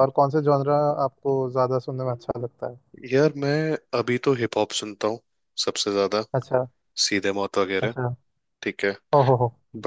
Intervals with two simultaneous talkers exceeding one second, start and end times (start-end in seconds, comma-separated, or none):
none